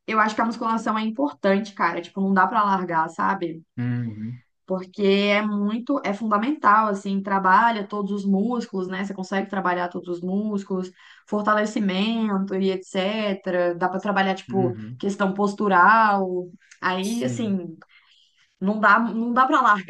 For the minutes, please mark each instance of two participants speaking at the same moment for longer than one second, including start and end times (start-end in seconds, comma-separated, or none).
none